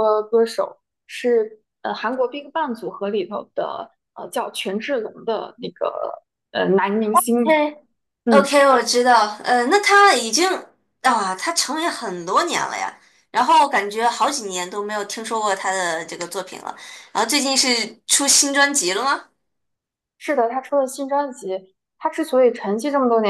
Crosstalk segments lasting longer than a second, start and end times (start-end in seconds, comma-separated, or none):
none